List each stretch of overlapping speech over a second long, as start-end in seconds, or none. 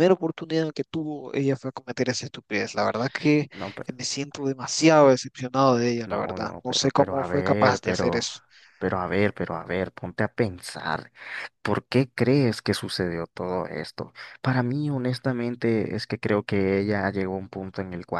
6.0-8.2